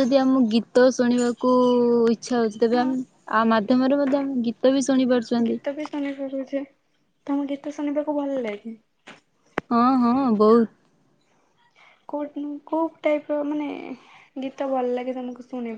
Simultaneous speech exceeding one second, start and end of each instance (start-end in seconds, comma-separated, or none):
none